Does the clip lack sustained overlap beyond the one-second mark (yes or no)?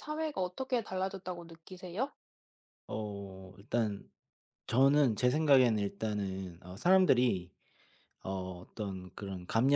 yes